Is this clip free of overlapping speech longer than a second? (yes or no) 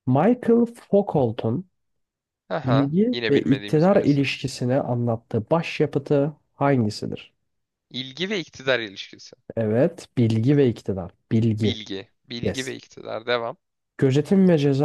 no